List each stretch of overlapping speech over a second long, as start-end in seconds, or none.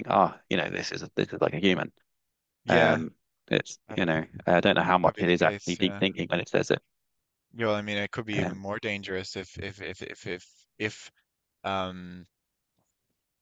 4.8-6.0